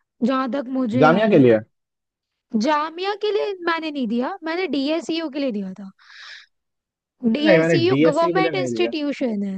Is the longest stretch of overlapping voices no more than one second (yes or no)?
no